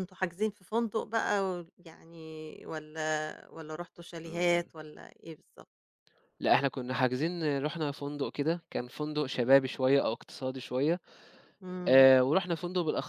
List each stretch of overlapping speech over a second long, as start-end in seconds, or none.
none